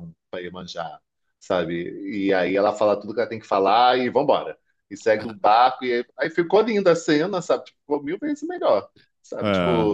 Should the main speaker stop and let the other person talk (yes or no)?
no